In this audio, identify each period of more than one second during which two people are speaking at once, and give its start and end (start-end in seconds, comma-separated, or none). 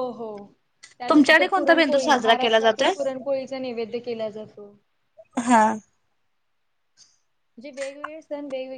1.1-2.9